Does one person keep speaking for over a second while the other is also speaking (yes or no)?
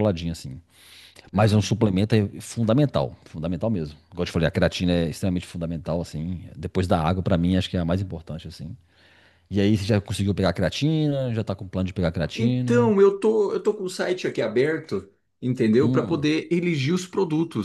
no